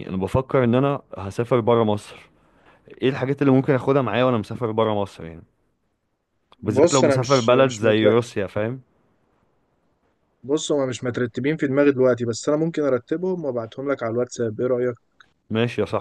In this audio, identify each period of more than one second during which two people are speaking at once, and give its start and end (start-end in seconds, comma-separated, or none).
6.6-8.1